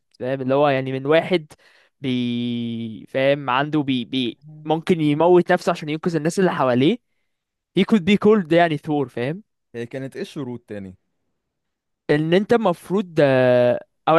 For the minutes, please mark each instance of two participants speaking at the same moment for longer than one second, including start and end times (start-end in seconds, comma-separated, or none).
none